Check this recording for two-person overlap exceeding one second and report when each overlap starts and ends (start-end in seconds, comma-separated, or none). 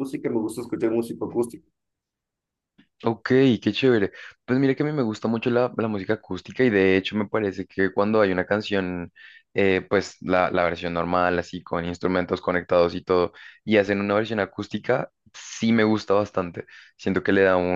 none